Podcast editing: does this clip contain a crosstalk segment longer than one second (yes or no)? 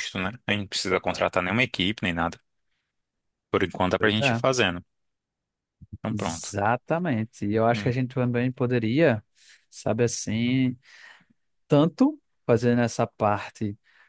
no